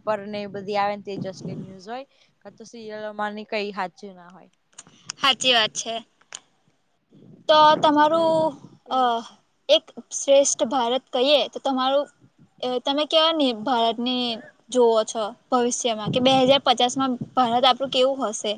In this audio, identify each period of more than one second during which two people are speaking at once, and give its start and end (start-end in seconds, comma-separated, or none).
none